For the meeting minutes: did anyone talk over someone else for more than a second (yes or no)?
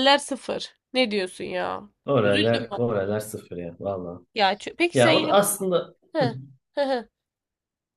no